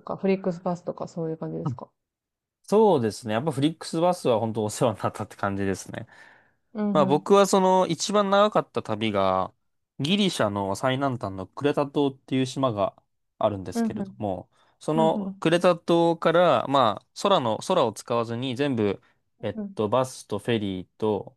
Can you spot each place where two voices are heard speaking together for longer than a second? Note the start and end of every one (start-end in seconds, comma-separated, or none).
none